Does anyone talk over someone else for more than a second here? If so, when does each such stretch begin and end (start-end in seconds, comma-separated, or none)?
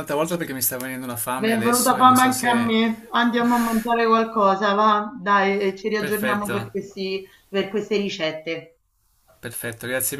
1.3-2.7